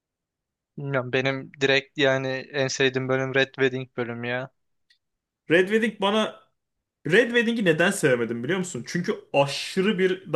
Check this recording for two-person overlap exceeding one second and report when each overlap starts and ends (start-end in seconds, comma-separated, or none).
none